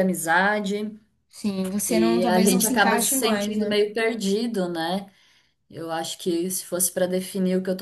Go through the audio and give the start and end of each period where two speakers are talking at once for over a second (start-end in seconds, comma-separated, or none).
1.9-3.7